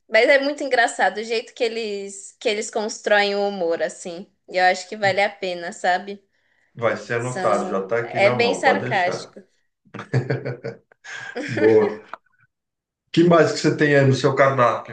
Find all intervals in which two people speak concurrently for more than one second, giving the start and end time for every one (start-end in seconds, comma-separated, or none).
7.2-9.3